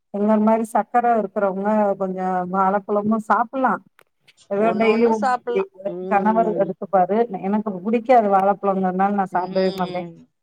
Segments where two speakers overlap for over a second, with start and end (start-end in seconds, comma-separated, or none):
4.7-6.7